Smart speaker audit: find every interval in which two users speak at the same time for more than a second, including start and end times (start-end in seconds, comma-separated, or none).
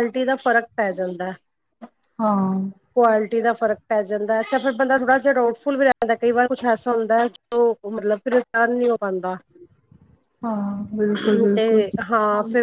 none